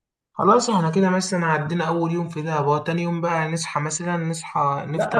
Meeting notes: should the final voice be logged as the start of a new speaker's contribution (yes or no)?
yes